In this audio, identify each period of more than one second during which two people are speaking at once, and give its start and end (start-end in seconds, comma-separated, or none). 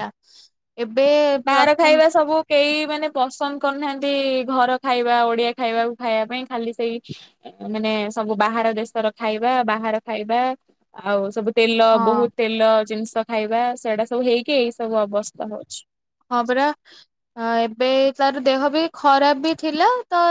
none